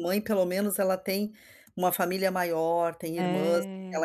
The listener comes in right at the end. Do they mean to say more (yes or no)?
no